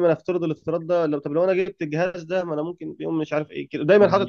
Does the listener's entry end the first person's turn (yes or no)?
yes